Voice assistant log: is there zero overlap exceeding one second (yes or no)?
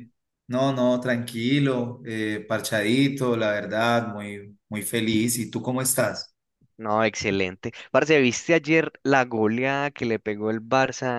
yes